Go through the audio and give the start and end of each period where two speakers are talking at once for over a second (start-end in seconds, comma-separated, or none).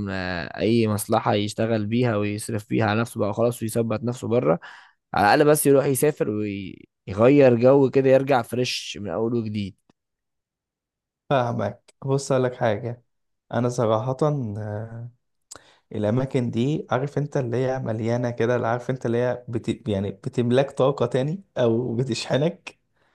none